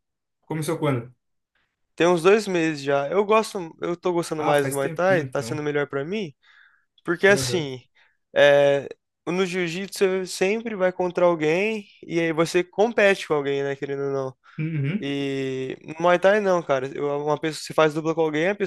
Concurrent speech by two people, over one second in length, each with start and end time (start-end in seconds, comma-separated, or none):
4.4-5.6